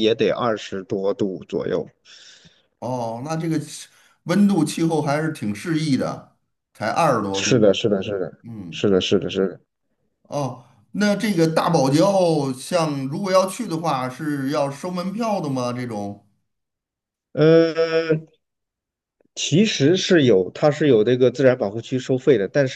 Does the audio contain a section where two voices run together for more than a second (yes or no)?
no